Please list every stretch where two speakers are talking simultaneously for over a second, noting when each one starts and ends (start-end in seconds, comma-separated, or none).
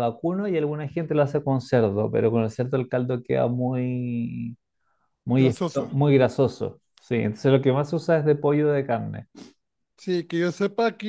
none